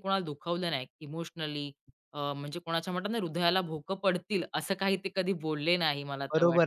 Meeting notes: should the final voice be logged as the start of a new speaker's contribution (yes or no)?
yes